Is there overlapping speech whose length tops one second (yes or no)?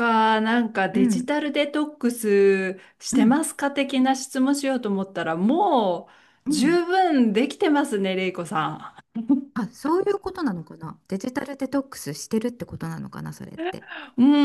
no